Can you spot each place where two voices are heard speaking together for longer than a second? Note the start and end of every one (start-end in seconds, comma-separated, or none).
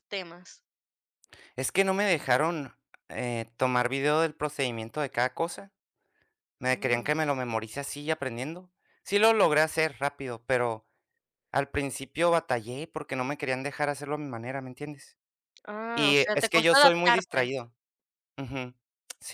15.9-17.5